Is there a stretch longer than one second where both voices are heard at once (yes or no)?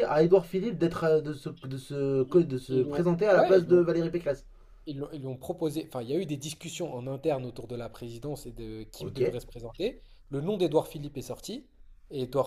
yes